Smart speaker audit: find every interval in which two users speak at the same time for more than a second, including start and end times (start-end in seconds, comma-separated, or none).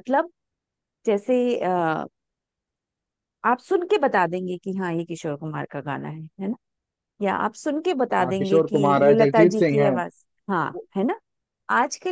8.2-9.9